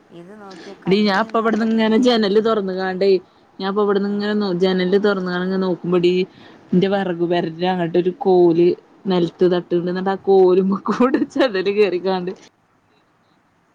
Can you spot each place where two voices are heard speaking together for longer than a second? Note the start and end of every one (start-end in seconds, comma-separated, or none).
0.9-2.5